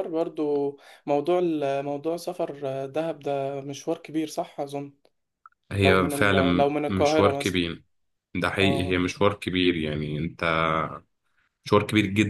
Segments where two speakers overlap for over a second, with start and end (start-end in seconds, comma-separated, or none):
5.8-7.6